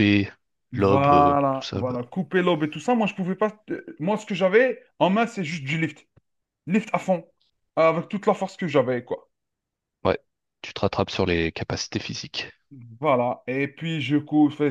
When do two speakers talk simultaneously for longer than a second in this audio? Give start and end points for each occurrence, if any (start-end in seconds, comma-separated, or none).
0.7-2.0